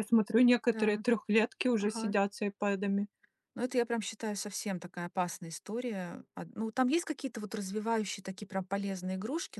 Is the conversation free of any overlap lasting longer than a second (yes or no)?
yes